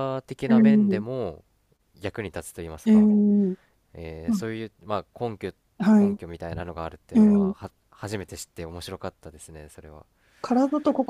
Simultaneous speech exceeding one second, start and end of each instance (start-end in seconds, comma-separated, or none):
none